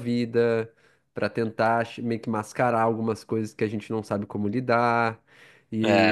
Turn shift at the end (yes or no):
no